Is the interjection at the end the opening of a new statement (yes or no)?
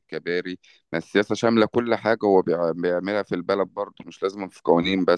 yes